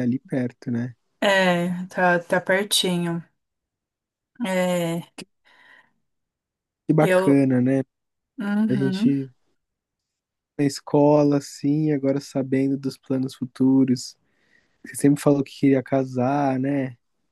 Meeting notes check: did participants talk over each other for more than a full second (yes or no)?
no